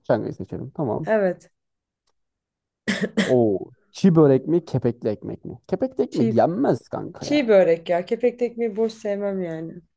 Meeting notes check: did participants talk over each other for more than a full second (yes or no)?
no